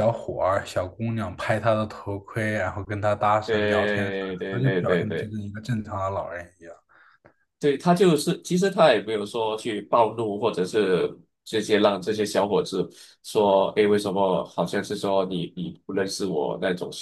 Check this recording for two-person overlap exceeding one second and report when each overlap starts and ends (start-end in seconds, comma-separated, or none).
3.4-5.3